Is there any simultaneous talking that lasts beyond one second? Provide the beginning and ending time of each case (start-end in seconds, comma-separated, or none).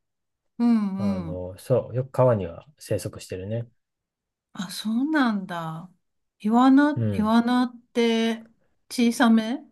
none